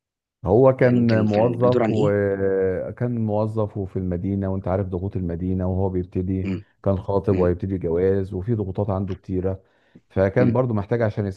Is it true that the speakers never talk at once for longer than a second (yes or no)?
no